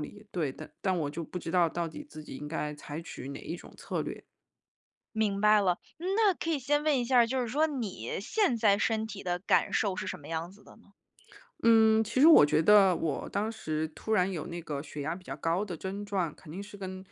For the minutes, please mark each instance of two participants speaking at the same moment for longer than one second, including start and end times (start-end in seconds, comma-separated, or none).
none